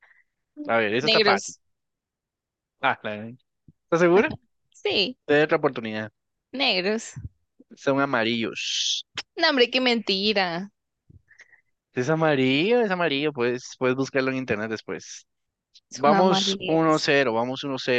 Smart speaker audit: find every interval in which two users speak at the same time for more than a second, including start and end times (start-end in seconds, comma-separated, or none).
15.9-17.1